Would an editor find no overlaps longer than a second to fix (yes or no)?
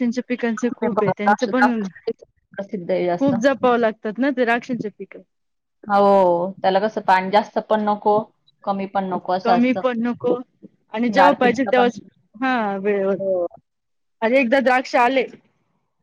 no